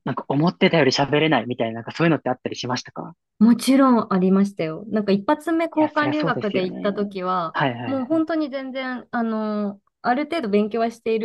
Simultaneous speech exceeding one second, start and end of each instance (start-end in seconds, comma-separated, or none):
5.8-8.2